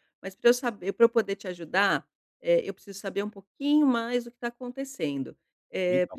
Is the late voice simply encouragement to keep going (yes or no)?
yes